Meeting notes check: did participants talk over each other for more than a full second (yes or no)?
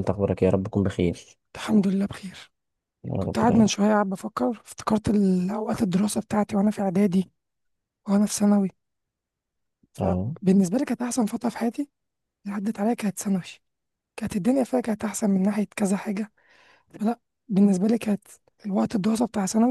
no